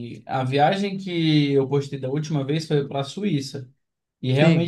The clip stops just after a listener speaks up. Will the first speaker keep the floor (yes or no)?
yes